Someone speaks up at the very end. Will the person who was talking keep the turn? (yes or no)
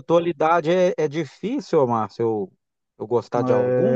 no